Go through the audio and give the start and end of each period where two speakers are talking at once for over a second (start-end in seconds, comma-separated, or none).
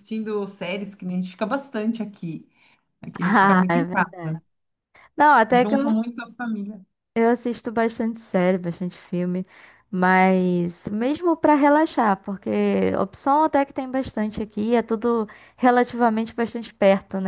3.2-4.4